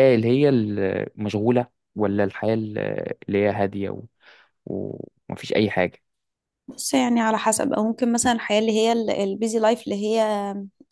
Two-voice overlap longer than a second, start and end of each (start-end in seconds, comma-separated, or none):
none